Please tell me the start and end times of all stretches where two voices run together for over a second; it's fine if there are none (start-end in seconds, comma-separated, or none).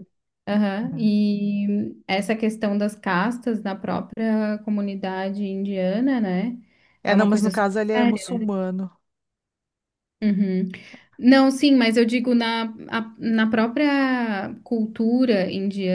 7.1-8.5